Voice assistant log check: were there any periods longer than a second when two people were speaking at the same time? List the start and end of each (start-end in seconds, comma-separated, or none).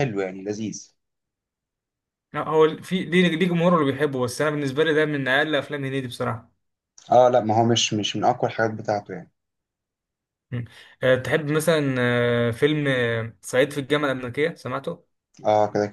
none